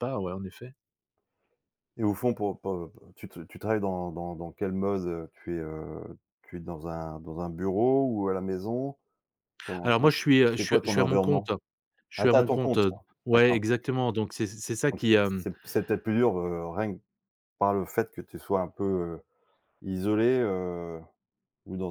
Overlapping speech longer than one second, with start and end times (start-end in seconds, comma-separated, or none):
9.8-11.5, 12.2-13.6